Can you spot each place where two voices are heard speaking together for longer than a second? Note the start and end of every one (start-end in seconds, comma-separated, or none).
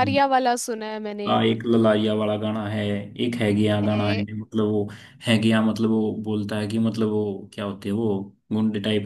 none